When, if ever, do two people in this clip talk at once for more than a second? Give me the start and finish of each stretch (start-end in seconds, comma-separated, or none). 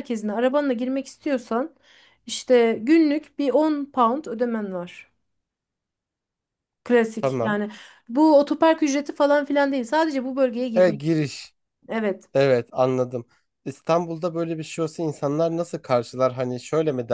none